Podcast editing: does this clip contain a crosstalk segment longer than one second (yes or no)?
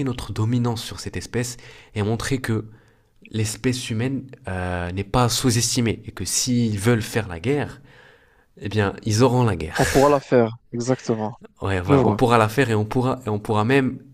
no